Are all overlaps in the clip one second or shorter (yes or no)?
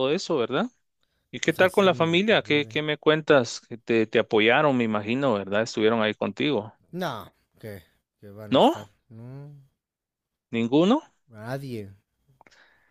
no